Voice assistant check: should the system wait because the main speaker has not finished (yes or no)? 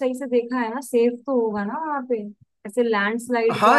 no